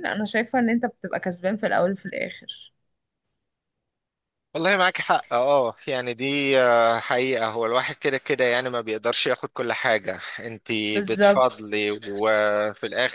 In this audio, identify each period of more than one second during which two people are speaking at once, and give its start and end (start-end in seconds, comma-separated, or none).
none